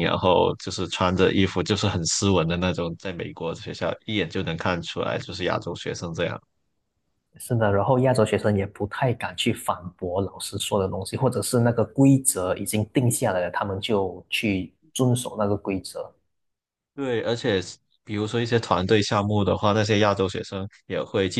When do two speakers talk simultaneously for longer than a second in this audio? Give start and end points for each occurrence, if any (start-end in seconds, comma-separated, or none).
none